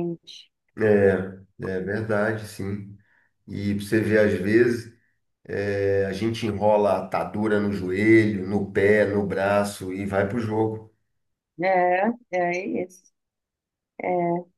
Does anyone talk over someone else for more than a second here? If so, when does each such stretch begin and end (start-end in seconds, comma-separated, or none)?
none